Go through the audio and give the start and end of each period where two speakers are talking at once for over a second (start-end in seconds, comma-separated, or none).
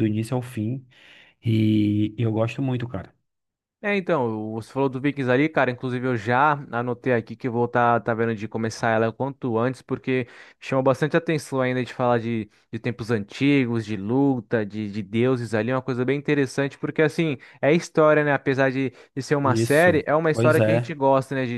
19.4-20.9